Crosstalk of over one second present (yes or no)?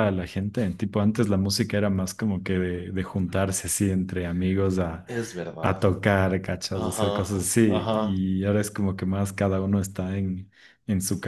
yes